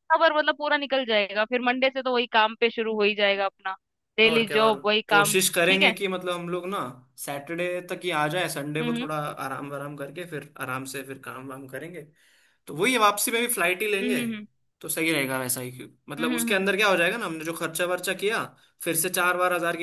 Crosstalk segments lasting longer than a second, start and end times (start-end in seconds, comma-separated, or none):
4.2-5.9